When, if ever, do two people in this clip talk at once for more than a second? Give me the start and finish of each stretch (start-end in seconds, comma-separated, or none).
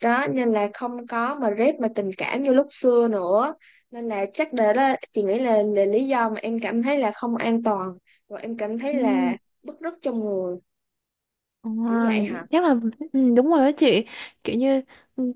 none